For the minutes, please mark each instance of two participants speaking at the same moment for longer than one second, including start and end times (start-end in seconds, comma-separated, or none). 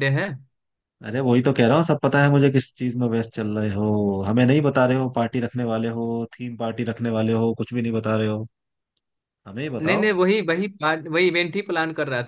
none